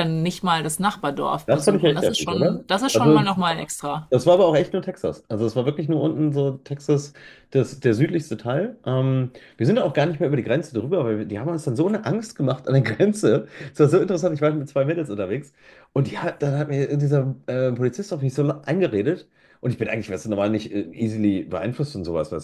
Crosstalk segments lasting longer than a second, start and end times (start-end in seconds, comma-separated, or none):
1.4-3.2